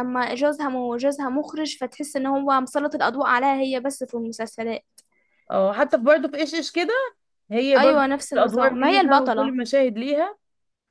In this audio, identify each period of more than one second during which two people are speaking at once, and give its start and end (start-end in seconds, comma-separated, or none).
7.8-9.5